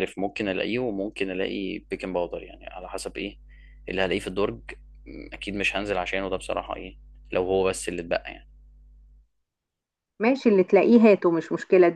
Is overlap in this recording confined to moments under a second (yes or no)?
yes